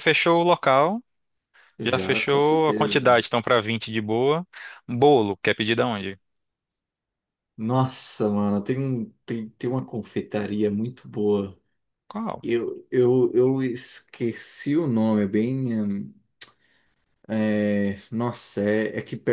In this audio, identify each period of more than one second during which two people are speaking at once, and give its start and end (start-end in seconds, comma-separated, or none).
1.8-3.2